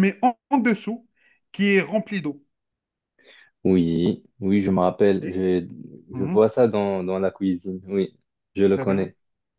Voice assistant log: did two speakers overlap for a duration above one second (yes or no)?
no